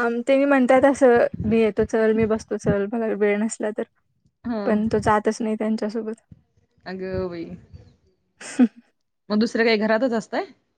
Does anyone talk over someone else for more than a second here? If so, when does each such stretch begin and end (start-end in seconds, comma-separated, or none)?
none